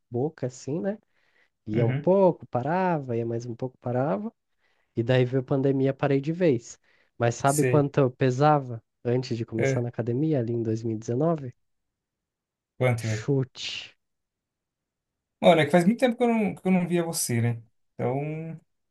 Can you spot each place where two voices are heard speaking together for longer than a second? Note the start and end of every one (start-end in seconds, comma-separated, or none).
none